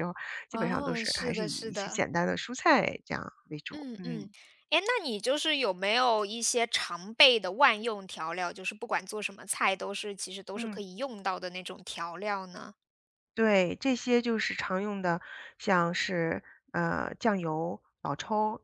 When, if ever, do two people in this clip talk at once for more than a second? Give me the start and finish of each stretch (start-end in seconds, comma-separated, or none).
0.5-2.0